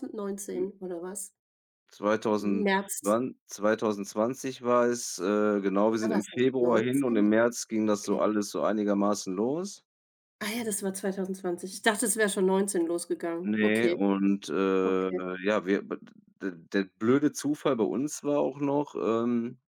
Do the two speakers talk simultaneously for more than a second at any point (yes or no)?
yes